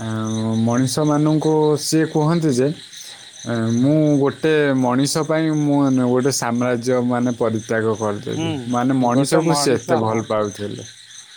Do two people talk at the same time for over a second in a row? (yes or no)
yes